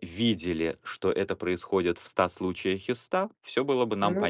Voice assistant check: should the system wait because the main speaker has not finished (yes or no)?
yes